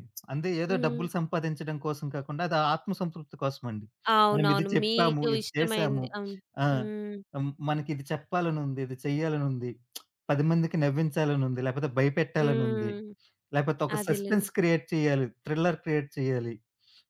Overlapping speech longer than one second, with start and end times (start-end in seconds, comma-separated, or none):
4.3-6.0